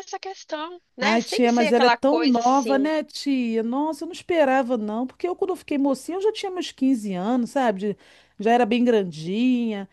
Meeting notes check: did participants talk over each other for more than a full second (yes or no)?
yes